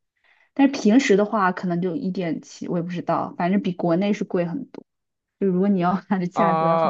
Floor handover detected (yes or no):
yes